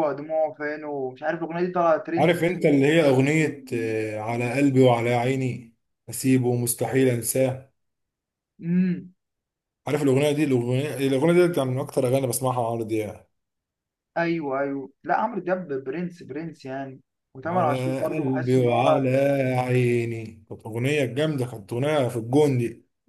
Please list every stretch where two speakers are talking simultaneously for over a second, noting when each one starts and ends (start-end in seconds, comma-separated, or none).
17.4-19.1